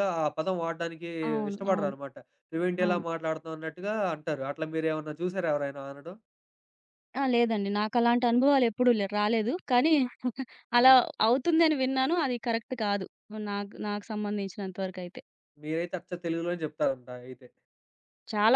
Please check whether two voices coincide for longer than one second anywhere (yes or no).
no